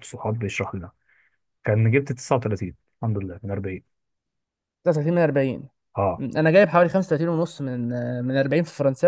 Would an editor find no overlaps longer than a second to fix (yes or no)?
yes